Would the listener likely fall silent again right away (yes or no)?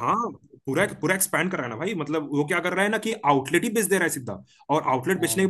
yes